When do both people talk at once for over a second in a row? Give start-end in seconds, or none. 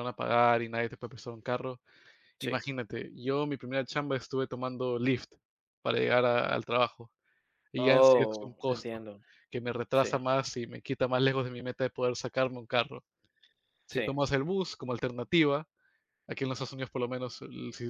7.8-9.1